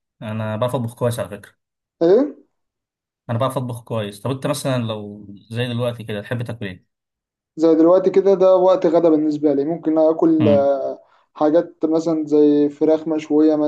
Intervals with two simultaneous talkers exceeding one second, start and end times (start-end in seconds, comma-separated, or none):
none